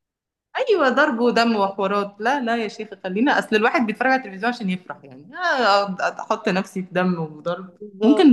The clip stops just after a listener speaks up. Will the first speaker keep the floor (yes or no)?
yes